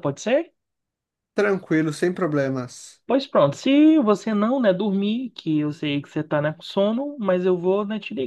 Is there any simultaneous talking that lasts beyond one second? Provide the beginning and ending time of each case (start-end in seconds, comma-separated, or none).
none